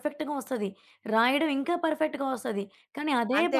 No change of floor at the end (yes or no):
yes